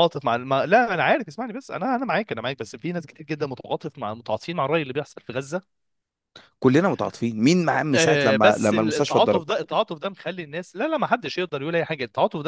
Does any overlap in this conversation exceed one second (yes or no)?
yes